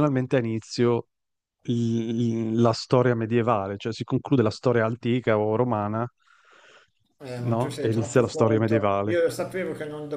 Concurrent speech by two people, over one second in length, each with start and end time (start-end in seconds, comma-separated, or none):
7.4-9.2